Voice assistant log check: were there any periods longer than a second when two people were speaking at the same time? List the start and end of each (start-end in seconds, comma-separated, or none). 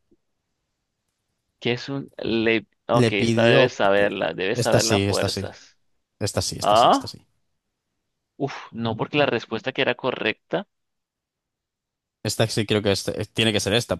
2.9-5.4